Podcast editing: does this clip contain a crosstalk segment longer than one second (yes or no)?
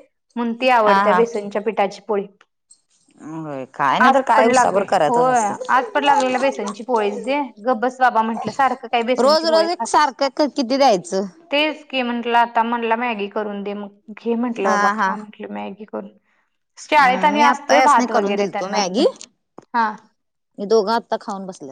yes